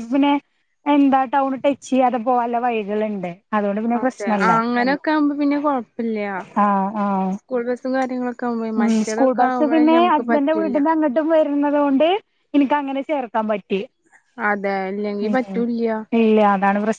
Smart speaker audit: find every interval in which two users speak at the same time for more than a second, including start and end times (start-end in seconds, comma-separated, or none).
8.8-10.8